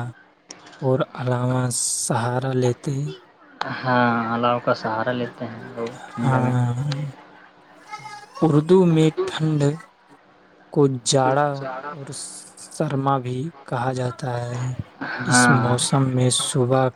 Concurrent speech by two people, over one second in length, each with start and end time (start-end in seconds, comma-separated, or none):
none